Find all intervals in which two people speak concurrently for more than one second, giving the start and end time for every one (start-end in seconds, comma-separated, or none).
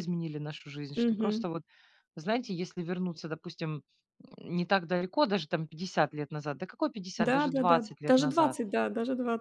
7.2-8.6